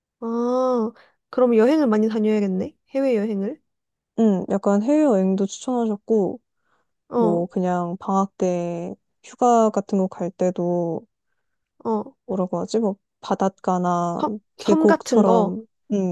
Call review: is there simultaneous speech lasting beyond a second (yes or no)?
yes